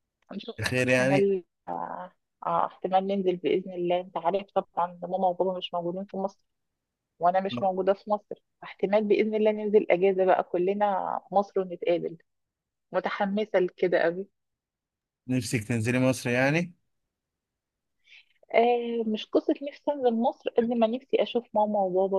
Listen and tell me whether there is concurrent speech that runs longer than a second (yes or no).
no